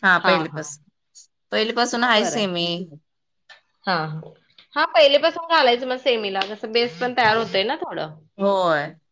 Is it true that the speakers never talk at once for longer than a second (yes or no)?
yes